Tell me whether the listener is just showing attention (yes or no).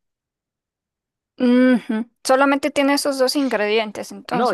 no